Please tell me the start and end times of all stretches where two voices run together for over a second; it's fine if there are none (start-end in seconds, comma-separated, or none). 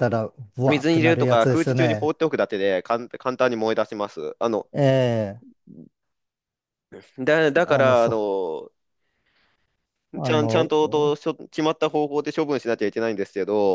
0.7-2.1